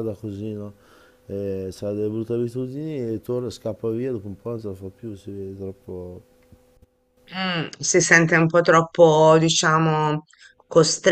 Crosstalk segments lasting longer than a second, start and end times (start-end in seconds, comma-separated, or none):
none